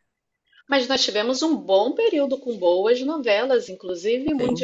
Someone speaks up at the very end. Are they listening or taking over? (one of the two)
listening